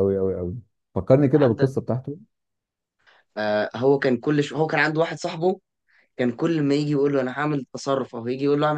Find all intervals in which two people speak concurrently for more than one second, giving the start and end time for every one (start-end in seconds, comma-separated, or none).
none